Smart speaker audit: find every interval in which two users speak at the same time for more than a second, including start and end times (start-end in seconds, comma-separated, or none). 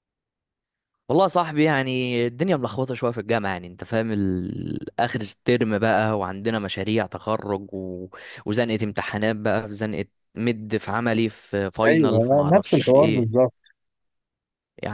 11.9-13.3